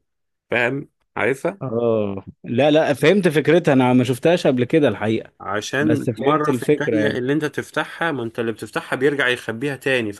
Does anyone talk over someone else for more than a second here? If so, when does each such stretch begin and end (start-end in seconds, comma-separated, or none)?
5.8-7.2